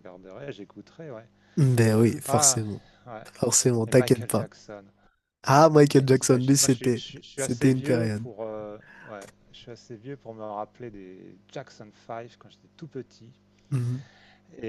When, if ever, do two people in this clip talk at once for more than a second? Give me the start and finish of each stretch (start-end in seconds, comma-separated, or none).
6.0-8.2